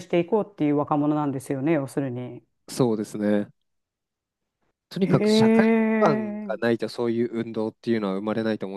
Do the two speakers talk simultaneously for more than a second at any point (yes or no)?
yes